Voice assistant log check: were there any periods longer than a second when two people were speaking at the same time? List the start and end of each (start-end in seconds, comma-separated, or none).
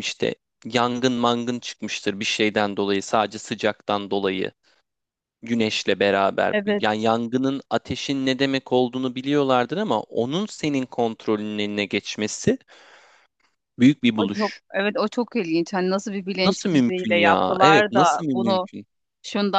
16.4-18.7